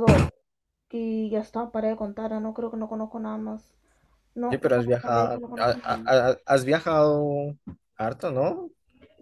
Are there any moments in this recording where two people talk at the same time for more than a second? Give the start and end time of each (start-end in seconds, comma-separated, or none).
4.5-6.1